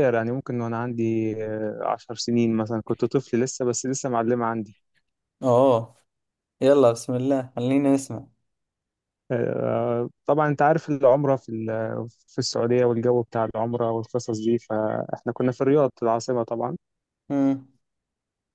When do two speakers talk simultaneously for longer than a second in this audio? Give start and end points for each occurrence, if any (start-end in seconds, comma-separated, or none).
none